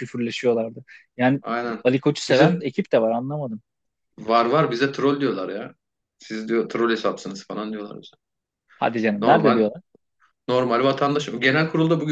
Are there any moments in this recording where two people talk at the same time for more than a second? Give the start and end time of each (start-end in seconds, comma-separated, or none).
none